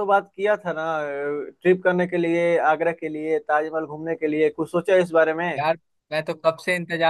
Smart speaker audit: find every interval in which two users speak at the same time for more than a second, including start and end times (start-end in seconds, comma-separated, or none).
none